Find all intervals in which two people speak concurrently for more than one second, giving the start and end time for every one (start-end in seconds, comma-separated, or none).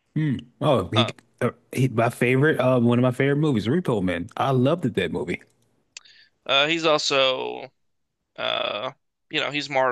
none